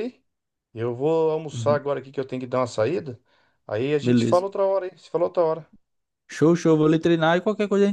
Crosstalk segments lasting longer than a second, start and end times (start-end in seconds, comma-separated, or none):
none